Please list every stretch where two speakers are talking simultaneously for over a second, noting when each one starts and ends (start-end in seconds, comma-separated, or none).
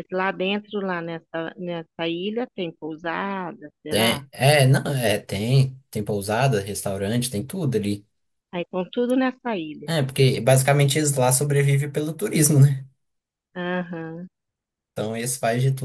none